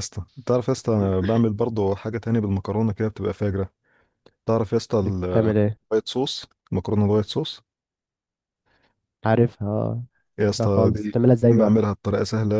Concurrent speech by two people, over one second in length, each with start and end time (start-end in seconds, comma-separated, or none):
10.5-11.8